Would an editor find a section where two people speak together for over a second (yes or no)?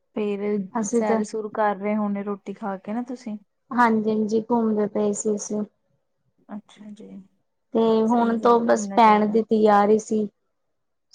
yes